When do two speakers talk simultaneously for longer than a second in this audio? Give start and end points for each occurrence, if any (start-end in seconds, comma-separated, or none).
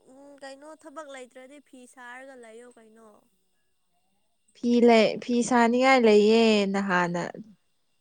none